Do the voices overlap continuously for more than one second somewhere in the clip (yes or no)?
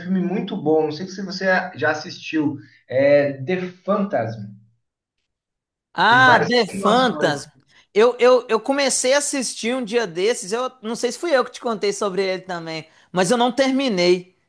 yes